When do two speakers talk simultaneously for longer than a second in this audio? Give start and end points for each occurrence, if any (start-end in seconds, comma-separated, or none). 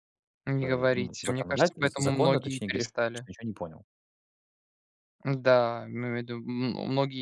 0.6-3.2